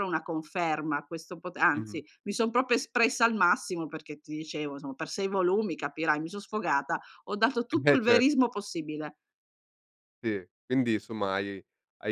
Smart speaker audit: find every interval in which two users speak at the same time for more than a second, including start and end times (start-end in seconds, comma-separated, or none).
none